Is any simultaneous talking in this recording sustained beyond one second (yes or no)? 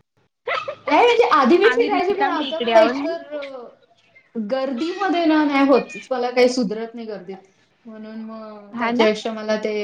yes